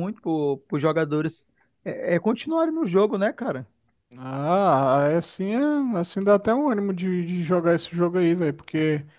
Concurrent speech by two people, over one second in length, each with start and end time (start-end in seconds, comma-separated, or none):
none